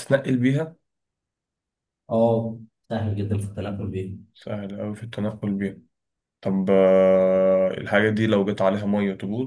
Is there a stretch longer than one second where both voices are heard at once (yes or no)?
no